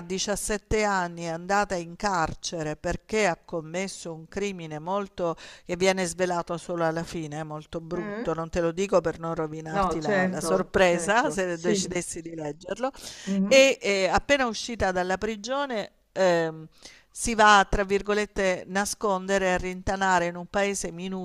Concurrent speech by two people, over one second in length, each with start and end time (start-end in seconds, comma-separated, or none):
9.7-11.9